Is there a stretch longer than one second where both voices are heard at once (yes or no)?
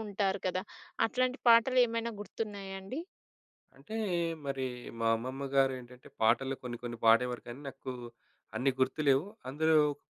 no